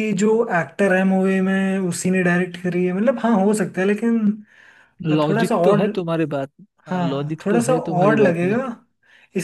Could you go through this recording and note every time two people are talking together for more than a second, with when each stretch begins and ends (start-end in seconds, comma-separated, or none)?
6.9-8.6